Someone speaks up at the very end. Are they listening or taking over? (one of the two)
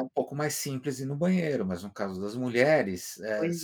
listening